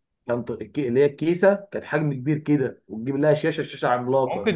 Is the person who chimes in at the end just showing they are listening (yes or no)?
no